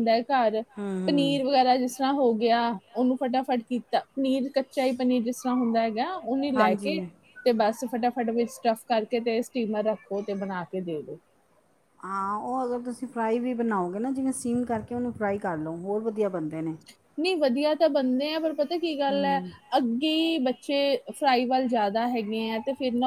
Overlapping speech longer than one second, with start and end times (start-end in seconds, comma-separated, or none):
none